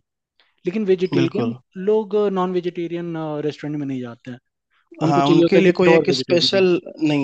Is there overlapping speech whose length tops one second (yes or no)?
yes